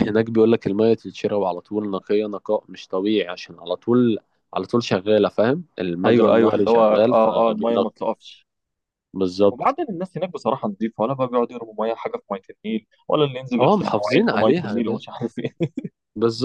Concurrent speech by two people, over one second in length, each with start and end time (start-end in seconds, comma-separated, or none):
6.0-8.0, 13.6-15.0